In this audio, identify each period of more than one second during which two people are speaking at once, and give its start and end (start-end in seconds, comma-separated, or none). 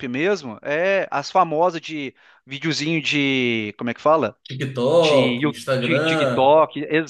5.0-6.5